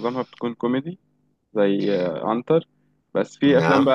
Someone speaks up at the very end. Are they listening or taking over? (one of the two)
listening